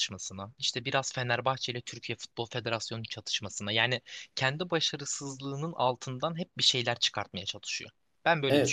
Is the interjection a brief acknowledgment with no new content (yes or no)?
no